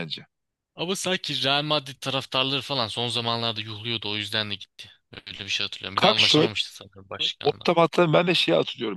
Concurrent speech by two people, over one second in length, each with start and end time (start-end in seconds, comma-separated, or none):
none